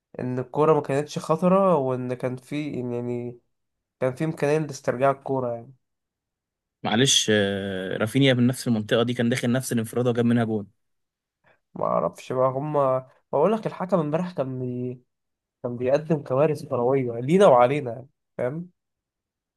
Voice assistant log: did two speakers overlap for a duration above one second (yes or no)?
no